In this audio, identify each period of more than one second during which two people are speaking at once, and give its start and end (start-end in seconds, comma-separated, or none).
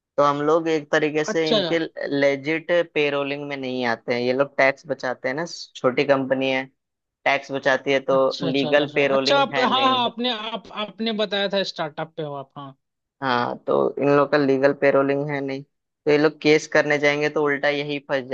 8.2-10.0